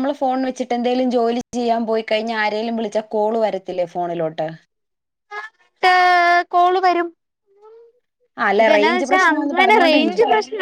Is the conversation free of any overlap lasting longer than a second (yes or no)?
no